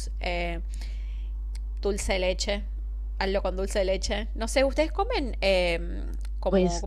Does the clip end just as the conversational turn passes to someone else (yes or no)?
no